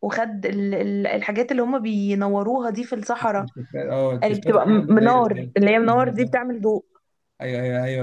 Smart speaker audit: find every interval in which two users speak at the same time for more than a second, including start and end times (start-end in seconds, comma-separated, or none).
4.2-5.5